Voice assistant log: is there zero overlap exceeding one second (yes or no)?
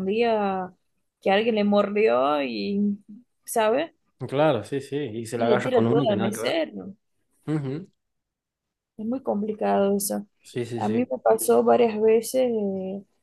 no